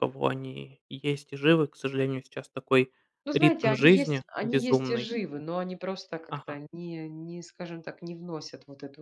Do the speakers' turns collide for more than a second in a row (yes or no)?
yes